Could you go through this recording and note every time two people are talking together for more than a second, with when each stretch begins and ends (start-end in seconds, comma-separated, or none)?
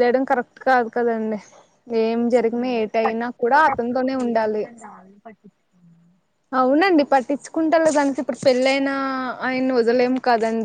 2.6-4.6